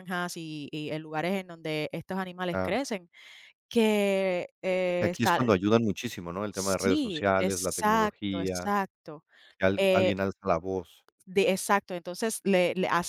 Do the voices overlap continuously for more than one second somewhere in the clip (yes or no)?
yes